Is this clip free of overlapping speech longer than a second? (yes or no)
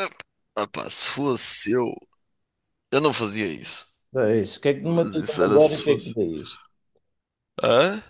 no